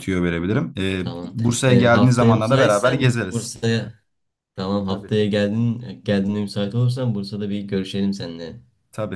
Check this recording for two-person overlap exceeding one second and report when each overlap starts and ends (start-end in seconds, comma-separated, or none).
1.0-3.6